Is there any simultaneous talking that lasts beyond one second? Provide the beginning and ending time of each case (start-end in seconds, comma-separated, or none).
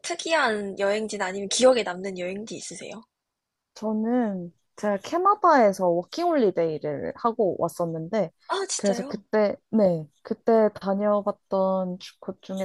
none